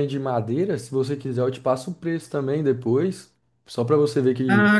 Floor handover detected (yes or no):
yes